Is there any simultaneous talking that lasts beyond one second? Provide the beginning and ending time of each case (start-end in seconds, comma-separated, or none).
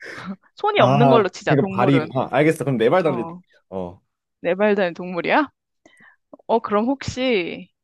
0.8-2.1